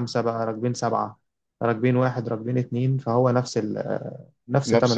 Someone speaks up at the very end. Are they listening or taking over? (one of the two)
taking over